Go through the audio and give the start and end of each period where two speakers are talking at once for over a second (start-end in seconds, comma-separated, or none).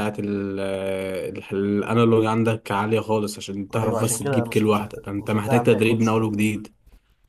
3.8-6.5